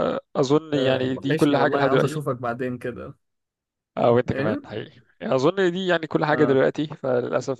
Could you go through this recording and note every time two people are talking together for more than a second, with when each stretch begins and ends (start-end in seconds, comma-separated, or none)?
0.7-2.3